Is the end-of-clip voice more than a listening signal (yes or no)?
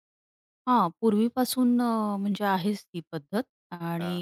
no